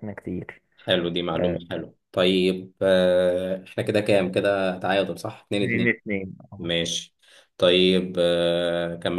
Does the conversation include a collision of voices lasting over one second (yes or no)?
no